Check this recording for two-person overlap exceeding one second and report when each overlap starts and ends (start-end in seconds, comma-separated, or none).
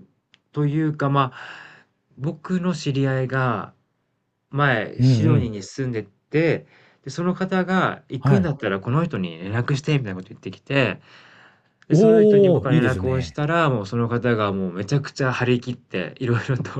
11.9-13.4